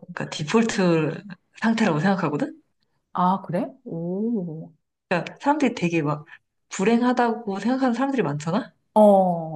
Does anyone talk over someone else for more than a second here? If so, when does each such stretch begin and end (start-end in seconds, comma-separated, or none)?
none